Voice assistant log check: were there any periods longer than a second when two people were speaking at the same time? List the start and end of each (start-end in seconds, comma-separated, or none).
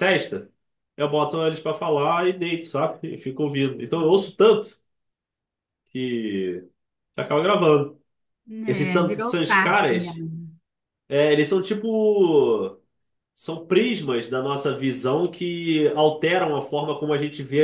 8.7-10.1